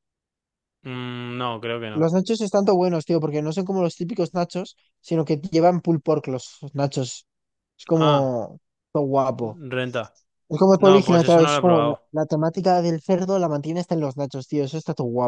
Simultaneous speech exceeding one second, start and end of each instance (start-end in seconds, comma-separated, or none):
10.8-12.1